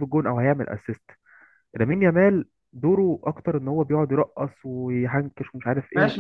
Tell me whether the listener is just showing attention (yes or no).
no